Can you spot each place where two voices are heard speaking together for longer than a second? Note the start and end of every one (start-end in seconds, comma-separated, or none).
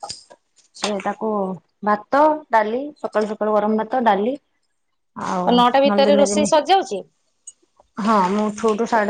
none